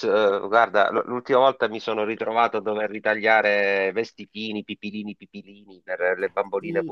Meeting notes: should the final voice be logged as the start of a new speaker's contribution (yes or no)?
yes